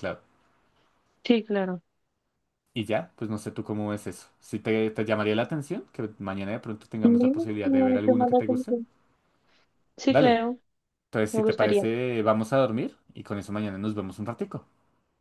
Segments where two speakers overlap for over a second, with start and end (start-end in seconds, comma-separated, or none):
7.0-8.8